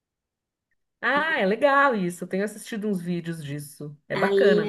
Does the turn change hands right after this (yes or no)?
yes